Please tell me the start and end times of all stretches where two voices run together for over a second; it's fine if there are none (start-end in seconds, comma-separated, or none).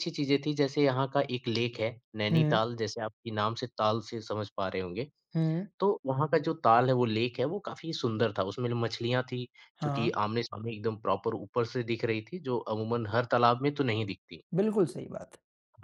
none